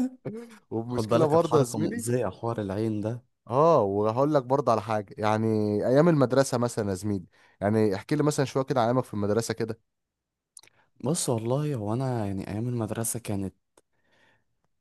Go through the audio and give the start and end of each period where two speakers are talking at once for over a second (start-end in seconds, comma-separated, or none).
0.9-2.1